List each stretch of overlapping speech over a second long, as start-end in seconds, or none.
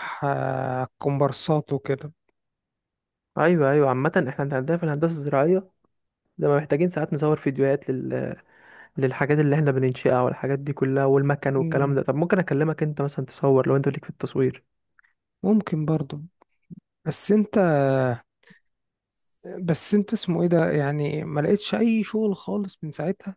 none